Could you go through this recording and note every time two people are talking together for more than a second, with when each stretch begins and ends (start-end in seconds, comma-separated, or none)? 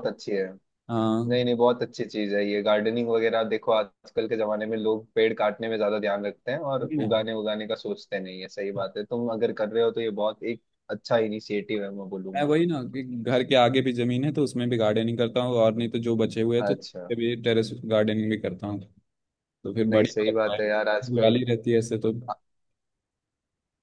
19.9-21.3